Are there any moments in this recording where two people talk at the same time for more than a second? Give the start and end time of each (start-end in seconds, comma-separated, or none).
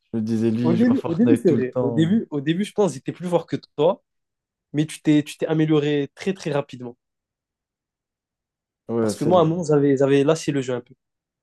0.6-2.2